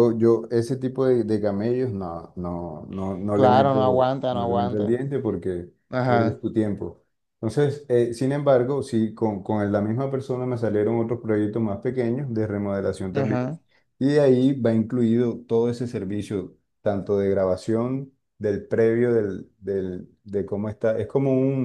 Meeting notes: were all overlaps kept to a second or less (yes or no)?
no